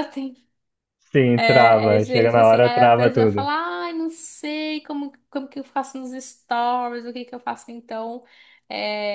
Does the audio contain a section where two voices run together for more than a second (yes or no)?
yes